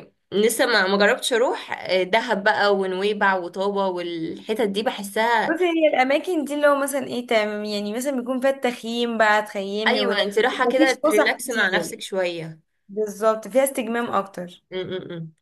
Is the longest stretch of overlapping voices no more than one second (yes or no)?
no